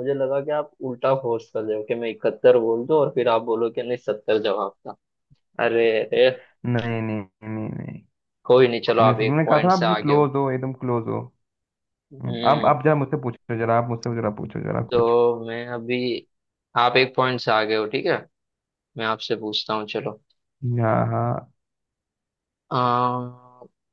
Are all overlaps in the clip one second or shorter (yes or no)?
no